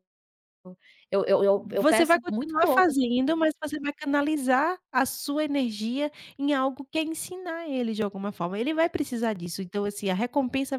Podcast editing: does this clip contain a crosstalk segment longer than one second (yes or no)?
yes